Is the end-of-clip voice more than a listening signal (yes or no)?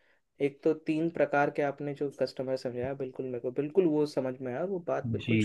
yes